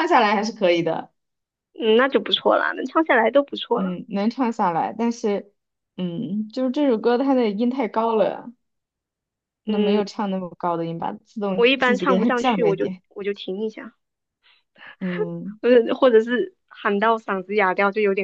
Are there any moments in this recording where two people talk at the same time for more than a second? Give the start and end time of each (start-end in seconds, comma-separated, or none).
11.6-13.0